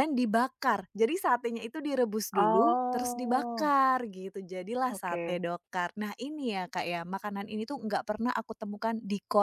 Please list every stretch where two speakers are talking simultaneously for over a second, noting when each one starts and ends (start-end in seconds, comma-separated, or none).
2.4-3.7